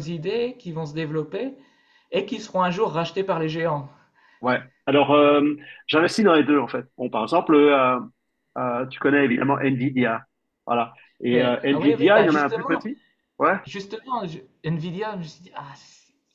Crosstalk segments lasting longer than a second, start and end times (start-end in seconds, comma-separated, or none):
11.3-12.8